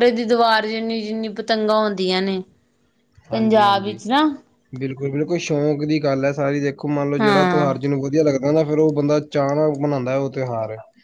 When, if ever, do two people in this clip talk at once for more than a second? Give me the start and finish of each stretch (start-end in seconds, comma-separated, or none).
none